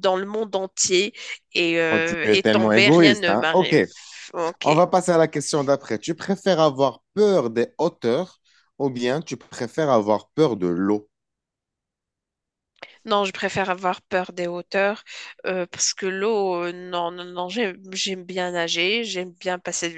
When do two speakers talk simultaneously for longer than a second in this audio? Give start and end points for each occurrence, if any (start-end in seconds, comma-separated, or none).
1.9-3.8